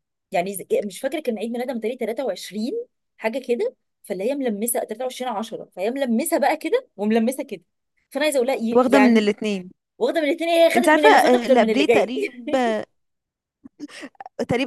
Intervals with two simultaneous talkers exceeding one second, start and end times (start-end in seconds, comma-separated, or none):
10.8-12.1